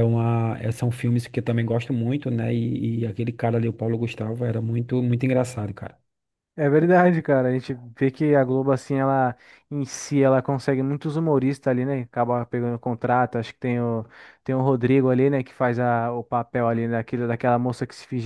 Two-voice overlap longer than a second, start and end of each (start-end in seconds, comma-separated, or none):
none